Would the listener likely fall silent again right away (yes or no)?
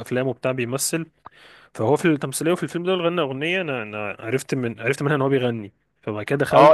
no